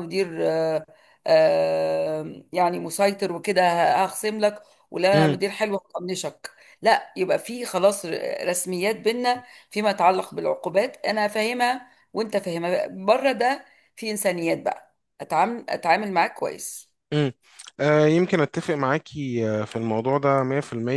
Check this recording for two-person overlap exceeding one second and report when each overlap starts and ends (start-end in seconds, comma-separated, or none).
none